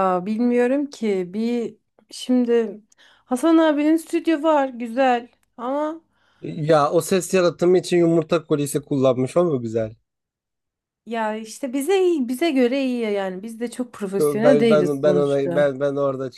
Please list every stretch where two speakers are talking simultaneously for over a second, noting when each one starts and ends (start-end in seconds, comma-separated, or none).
14.2-15.7